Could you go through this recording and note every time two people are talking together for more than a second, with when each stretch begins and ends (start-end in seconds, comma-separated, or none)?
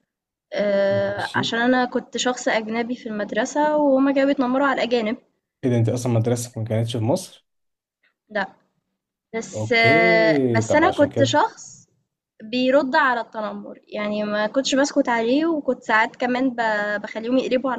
9.5-11.4